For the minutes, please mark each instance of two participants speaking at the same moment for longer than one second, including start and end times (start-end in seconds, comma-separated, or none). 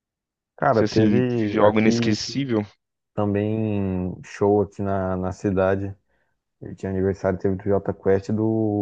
0.7-2.2